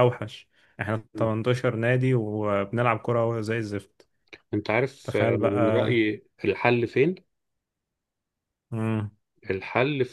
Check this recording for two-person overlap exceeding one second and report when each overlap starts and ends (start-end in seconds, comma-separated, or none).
none